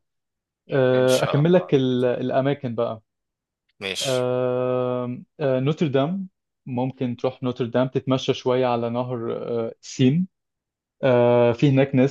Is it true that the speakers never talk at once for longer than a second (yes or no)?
no